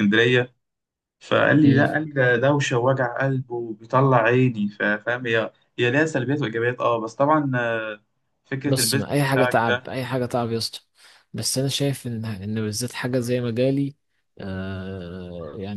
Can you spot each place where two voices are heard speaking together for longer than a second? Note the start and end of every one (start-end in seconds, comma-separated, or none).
8.7-10.0